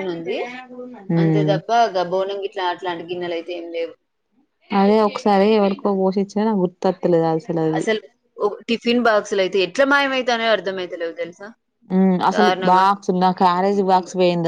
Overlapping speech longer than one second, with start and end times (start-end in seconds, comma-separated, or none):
none